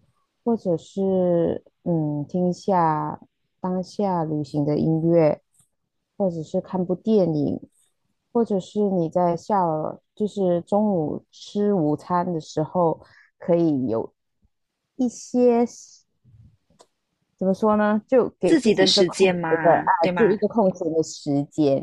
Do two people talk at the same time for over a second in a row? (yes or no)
yes